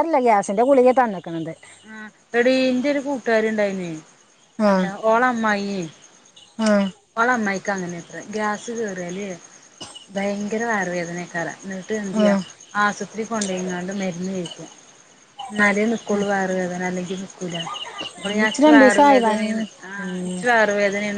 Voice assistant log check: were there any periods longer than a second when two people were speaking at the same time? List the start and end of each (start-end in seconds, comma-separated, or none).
18.4-20.4